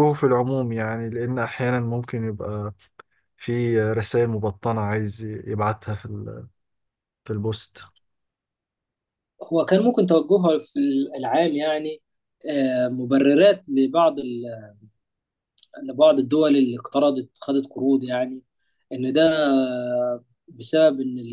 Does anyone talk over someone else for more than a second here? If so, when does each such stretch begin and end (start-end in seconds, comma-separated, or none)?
none